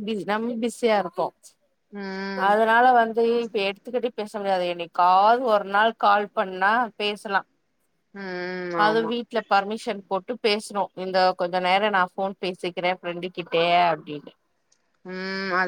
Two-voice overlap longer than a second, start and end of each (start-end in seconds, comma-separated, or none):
none